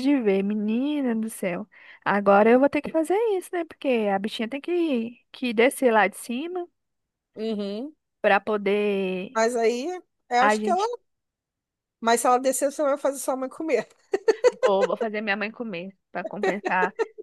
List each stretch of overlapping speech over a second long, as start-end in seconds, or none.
none